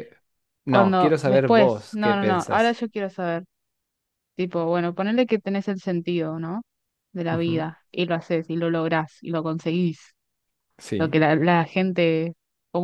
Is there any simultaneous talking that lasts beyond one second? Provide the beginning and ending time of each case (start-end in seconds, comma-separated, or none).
0.7-2.8